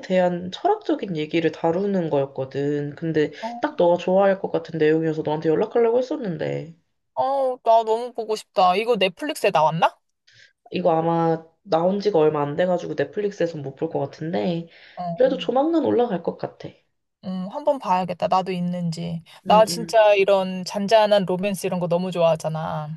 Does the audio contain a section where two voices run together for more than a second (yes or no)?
no